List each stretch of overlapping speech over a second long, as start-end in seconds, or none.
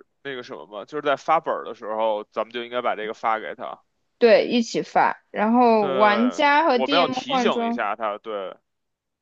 5.8-7.9